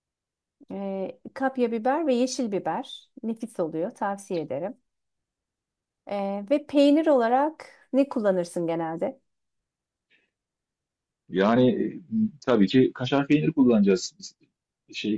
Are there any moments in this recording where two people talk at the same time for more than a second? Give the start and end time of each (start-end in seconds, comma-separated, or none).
none